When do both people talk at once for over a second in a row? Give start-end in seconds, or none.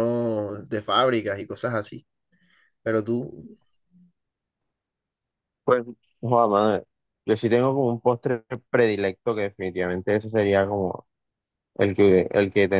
none